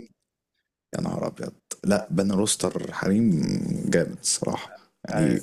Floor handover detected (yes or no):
no